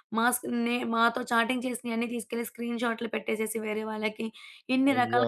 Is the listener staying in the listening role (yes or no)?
yes